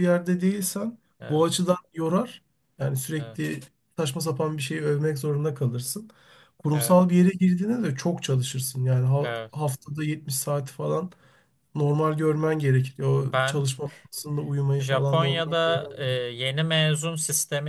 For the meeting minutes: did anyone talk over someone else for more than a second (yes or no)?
yes